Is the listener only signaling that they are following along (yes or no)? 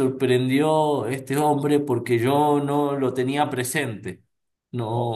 yes